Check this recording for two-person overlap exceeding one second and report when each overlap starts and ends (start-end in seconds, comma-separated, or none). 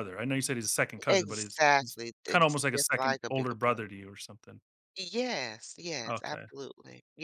1.1-3.8